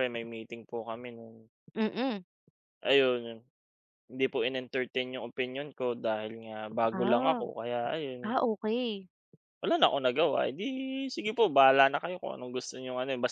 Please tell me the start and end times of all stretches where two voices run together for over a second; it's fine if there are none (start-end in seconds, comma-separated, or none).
none